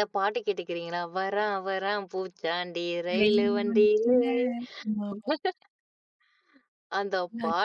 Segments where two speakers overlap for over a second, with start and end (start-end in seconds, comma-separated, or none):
3.2-4.4